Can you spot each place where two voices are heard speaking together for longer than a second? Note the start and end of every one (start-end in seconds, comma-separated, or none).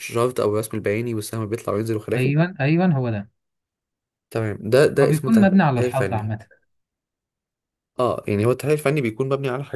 5.0-6.3